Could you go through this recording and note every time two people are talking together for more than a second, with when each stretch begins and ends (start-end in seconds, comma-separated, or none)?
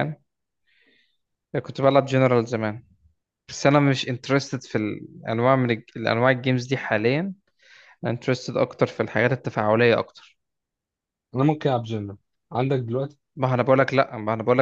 none